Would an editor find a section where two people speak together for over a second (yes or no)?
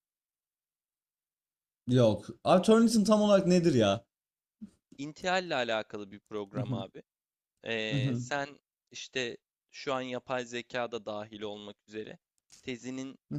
no